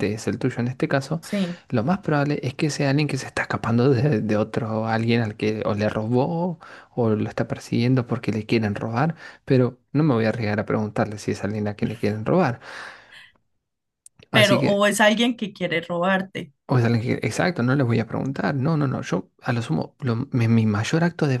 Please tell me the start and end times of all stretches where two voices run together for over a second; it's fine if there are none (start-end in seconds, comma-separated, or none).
none